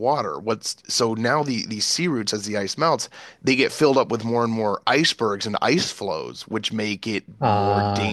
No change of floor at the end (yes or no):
yes